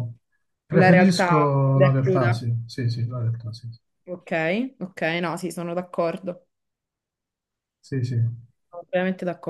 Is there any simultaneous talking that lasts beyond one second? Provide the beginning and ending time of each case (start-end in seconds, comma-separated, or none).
0.8-2.3